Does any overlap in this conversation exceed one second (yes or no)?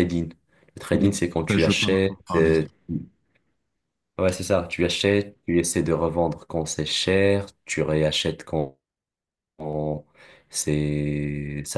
yes